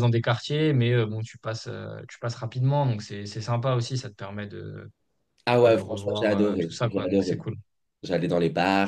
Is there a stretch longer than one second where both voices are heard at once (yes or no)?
yes